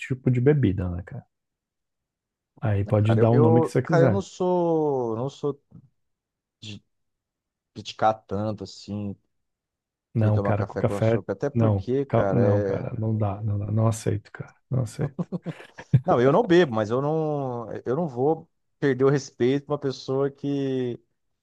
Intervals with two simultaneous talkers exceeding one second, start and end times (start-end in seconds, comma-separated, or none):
2.8-4.2, 10.2-12.9